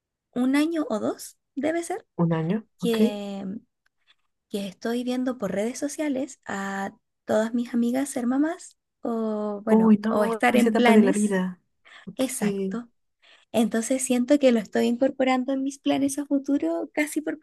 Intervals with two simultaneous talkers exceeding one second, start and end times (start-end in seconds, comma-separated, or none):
9.7-11.4